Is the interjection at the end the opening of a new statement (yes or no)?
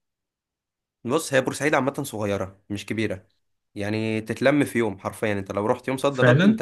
no